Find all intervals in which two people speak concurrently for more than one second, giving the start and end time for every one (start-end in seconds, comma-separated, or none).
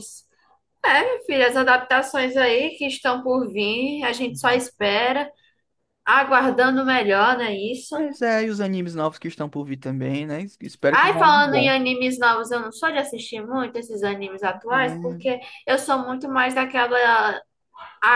none